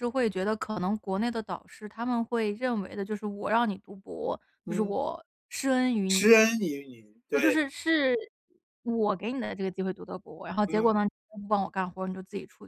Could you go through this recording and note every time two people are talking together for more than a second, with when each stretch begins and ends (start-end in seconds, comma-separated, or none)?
none